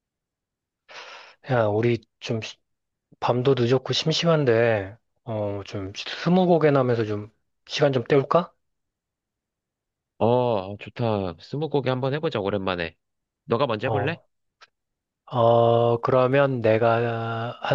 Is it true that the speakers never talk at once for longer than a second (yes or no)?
yes